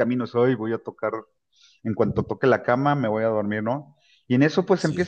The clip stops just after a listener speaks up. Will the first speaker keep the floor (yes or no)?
yes